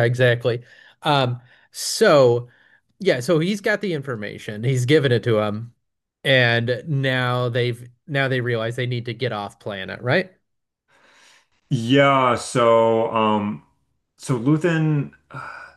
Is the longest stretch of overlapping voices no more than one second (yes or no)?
yes